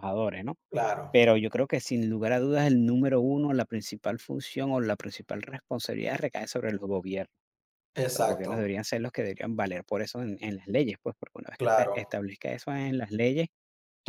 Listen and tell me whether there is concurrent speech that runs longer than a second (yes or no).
no